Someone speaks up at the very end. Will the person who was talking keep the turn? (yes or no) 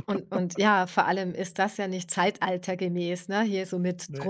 yes